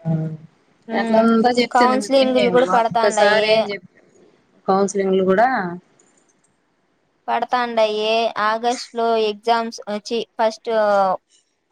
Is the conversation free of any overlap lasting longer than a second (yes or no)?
no